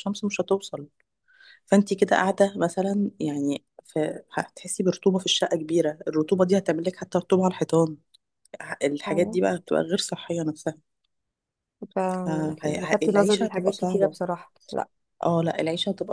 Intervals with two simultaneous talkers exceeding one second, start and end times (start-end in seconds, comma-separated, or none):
12.6-14.2